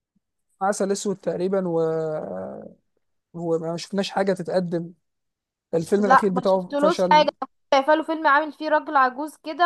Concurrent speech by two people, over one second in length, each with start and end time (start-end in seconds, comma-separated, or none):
6.0-7.3